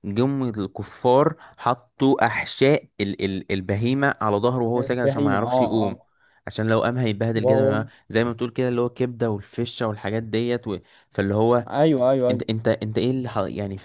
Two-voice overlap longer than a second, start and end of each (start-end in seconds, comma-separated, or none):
4.8-6.0